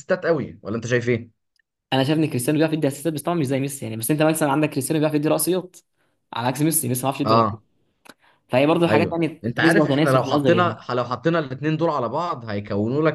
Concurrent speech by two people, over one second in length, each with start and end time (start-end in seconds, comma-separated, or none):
8.9-10.8